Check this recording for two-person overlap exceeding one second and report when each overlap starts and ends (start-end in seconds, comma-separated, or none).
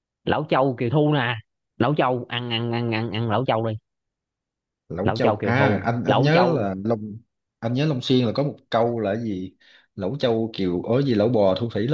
5.0-6.7